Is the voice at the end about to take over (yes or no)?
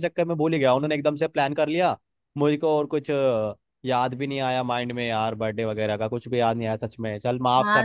yes